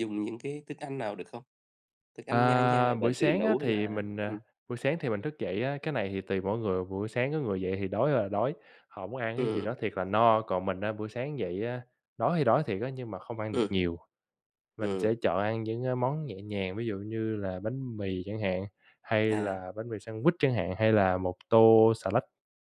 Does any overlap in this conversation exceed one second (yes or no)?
yes